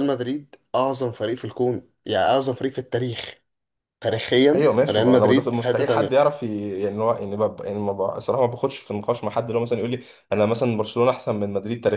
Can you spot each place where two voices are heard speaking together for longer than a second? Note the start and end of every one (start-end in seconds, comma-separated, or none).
4.5-6.3